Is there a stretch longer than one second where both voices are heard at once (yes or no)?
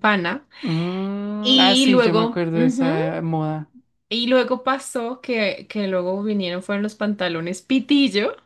yes